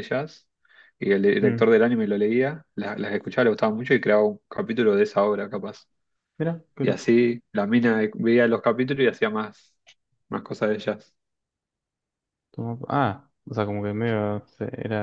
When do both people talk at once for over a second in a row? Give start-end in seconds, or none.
none